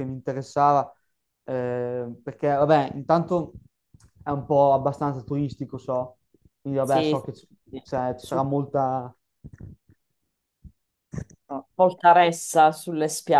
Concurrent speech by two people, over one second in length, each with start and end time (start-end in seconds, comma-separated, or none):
none